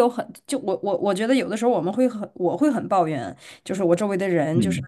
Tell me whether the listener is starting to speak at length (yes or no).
no